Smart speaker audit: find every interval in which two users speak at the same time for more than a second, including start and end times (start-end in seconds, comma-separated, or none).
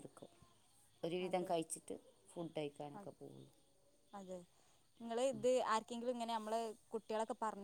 none